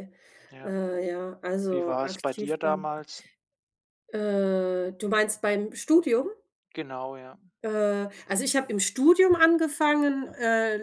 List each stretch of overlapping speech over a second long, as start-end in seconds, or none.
1.7-3.0